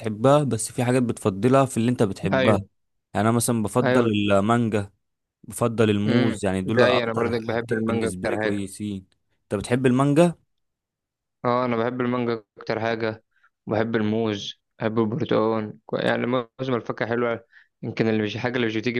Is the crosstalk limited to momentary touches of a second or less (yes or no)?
no